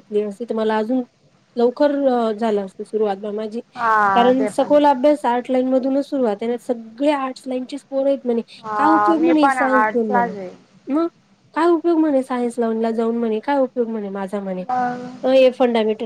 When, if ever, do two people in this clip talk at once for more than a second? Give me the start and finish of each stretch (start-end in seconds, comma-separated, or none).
8.8-10.3